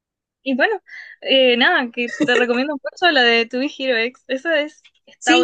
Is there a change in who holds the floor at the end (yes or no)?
yes